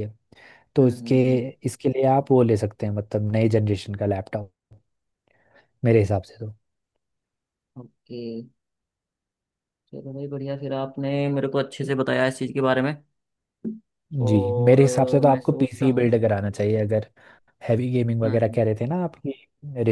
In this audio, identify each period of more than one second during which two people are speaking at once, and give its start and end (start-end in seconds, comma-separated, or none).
14.3-16.1